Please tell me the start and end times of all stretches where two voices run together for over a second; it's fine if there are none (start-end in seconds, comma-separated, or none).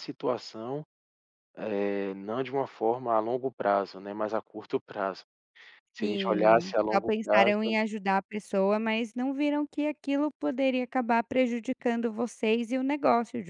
6.0-7.6